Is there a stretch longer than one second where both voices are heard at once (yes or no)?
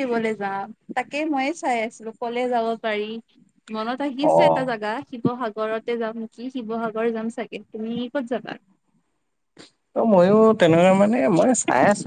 no